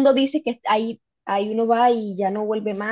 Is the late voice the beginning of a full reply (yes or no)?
no